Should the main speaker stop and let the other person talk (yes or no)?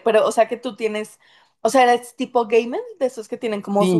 no